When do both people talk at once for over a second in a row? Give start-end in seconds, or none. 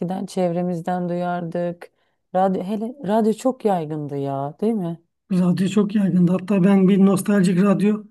none